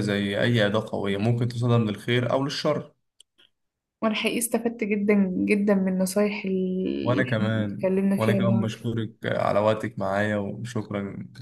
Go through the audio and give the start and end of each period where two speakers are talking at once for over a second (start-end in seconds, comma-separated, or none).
7.0-8.9